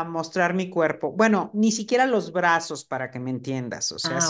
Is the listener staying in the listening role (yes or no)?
yes